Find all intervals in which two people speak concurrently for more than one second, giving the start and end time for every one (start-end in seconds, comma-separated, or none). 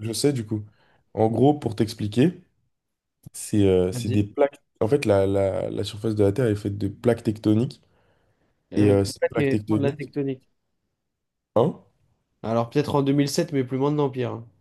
8.8-10.1